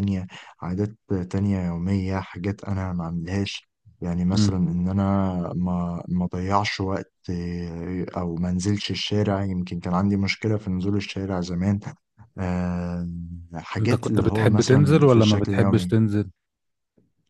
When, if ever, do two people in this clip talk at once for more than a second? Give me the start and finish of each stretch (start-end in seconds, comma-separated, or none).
13.8-15.9